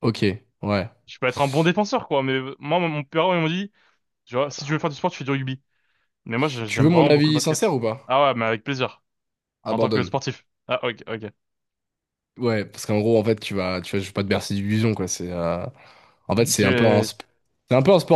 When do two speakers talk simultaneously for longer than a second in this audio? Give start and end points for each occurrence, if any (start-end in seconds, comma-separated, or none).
6.7-8.2